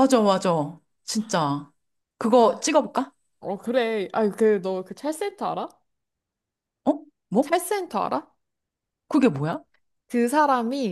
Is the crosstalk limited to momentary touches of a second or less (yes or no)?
yes